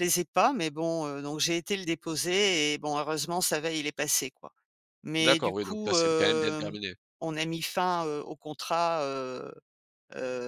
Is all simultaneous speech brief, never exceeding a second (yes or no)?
no